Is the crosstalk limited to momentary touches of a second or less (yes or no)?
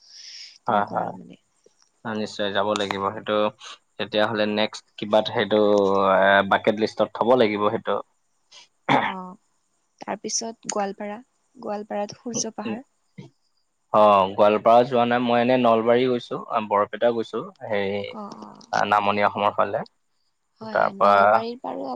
yes